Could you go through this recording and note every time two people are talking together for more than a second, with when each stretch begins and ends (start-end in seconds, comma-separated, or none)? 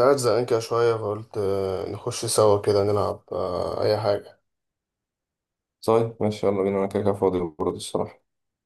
none